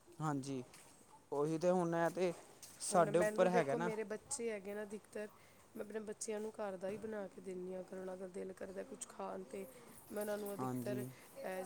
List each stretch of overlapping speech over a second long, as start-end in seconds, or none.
none